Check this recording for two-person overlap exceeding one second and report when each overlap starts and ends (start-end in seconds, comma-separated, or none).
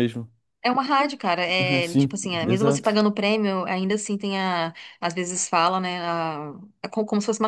1.6-3.0